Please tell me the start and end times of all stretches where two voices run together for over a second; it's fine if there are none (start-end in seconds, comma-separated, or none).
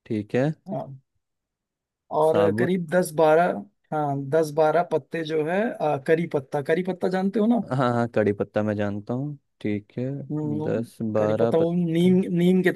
10.6-12.1